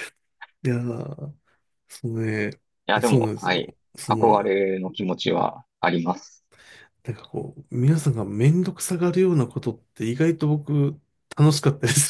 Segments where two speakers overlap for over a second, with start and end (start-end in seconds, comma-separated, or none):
3.0-4.5